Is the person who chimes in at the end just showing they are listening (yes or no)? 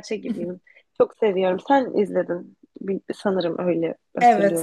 no